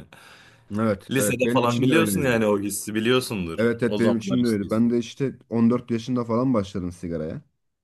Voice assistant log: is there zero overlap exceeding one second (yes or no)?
no